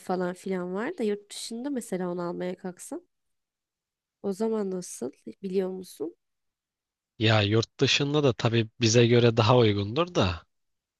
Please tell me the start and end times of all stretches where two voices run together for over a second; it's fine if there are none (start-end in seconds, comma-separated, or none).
none